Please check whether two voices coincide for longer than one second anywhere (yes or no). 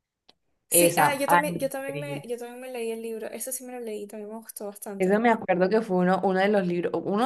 yes